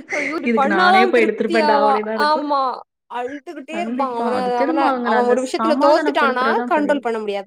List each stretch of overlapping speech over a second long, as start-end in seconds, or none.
0.5-2.5, 3.8-7.0